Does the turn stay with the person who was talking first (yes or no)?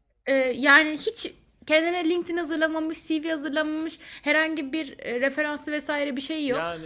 no